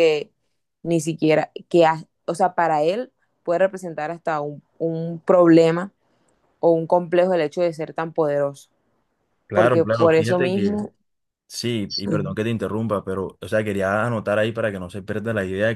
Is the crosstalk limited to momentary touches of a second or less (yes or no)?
no